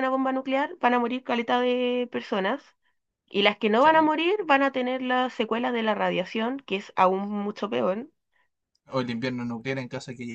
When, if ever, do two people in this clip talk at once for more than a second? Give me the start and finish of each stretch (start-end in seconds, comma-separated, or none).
none